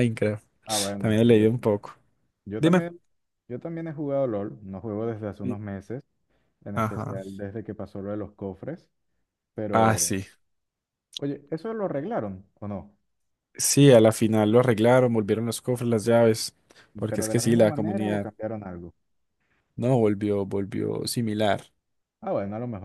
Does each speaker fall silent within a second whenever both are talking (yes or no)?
no